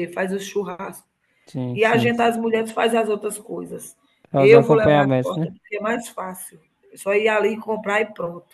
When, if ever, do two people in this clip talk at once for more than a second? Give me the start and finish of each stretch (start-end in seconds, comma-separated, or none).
4.3-5.5